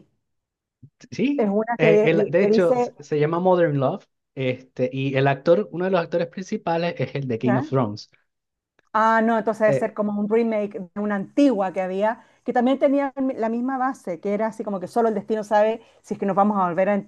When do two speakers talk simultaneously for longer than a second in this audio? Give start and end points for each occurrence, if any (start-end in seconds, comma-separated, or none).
1.4-2.9